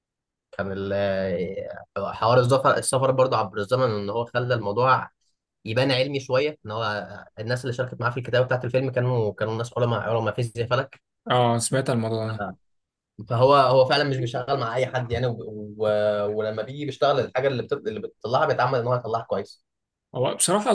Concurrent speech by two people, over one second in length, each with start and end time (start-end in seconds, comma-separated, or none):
none